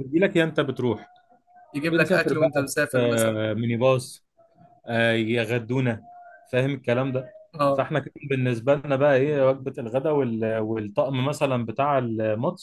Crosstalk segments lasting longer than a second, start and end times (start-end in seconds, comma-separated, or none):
1.9-3.4